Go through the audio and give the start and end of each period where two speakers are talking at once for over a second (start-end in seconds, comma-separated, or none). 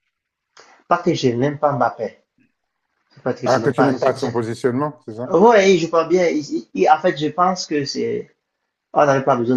3.4-4.7